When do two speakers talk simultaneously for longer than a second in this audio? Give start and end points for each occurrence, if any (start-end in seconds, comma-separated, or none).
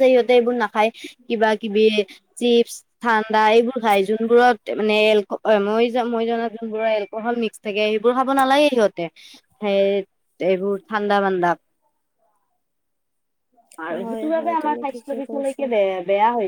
13.9-15.6